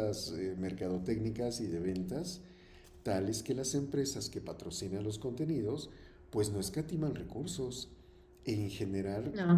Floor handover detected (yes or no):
no